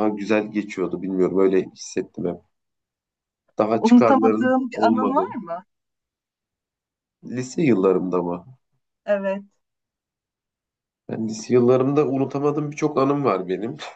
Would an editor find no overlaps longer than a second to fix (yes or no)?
no